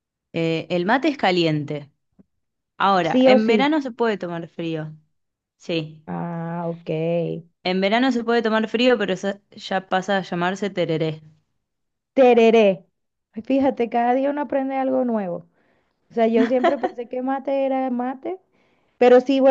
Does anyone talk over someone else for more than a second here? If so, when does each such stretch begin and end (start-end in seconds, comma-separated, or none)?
none